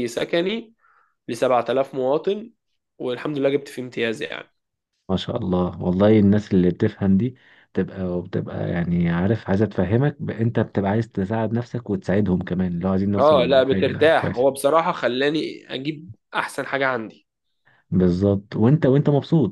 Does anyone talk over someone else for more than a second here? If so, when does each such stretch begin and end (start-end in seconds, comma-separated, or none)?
13.2-14.5